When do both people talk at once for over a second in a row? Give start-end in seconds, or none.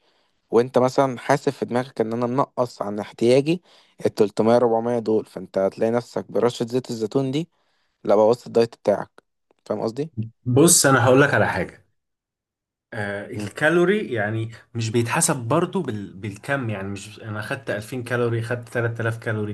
none